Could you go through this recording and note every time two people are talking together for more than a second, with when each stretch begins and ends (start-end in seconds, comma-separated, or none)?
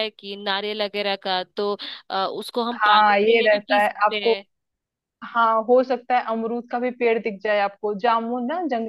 2.8-4.4